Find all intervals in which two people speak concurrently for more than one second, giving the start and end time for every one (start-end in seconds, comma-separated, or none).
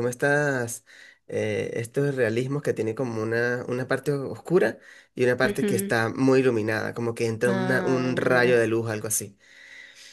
7.5-8.7